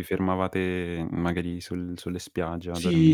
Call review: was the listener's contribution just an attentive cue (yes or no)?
no